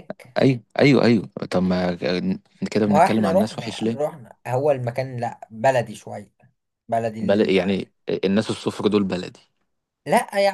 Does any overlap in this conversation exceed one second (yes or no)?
yes